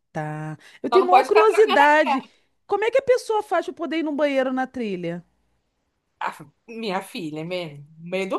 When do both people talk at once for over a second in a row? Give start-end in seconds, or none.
0.9-2.2